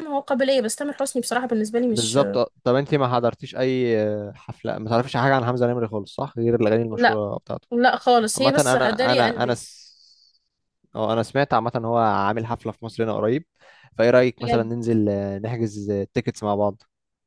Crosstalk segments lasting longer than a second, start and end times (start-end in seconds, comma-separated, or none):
8.3-9.6